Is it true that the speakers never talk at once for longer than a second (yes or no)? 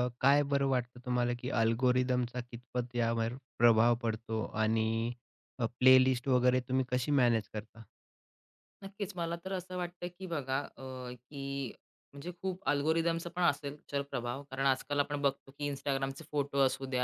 yes